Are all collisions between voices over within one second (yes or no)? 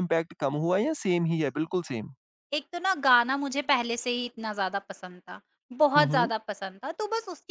yes